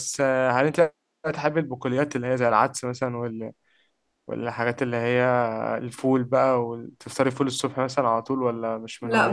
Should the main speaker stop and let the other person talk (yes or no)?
yes